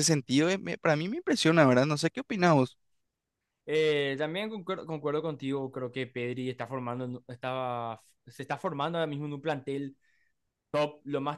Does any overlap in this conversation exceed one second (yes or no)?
no